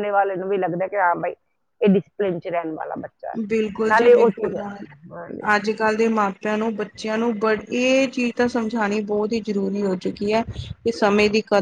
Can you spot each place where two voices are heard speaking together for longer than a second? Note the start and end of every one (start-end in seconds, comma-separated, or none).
none